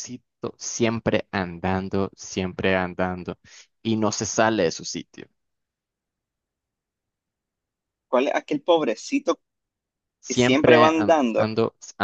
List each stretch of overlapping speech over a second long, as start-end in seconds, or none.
10.3-11.5